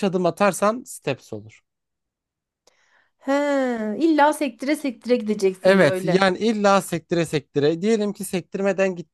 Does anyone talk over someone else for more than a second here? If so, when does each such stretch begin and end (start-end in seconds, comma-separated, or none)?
none